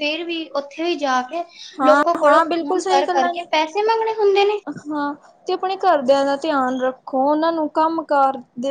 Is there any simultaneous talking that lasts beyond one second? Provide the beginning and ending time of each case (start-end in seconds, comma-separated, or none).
1.9-3.5